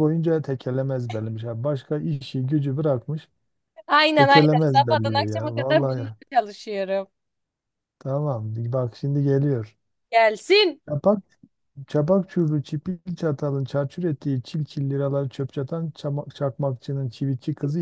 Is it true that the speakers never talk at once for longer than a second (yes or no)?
no